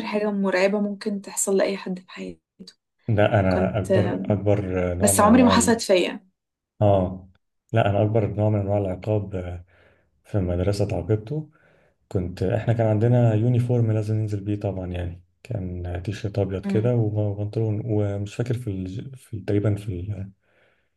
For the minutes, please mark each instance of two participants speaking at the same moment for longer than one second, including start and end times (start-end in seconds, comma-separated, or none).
none